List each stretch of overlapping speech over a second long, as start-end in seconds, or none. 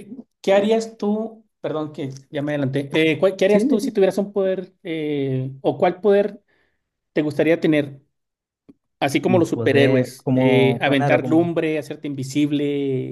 9.3-11.5